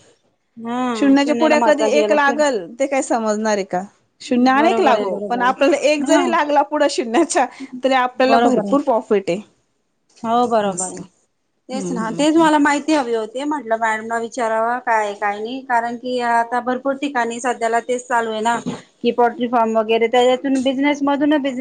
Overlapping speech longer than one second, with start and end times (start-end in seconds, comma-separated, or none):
0.9-2.4, 4.5-6.3